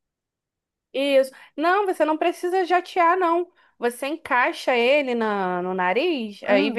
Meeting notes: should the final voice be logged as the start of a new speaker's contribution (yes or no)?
no